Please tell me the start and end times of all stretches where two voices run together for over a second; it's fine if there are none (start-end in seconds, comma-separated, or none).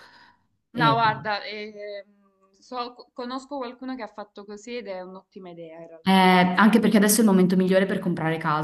none